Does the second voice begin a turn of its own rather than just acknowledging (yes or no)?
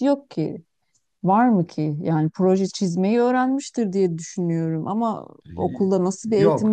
yes